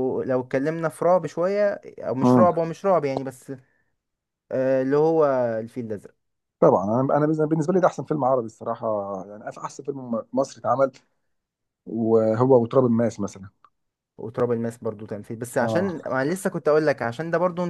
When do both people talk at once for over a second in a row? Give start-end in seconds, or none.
none